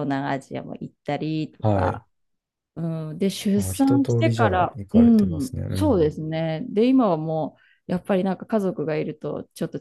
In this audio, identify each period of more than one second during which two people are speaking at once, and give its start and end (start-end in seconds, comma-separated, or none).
3.6-6.2